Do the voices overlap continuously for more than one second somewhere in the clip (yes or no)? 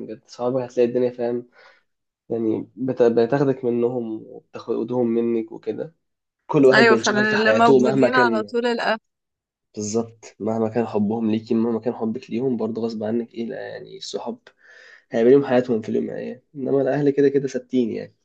yes